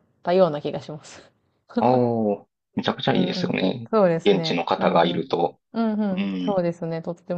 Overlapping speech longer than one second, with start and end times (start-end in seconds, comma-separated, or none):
3.1-5.3